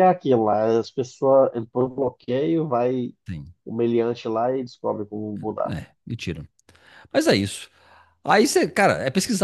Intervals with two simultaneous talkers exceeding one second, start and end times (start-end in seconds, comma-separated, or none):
none